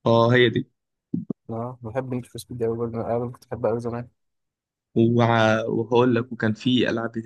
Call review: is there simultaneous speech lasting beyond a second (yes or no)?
no